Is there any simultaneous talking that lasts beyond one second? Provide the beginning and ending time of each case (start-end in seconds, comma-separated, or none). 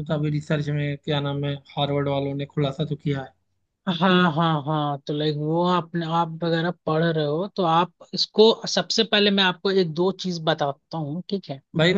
none